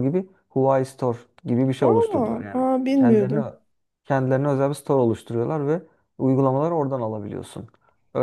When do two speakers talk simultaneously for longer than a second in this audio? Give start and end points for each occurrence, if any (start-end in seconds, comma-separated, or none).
1.8-3.4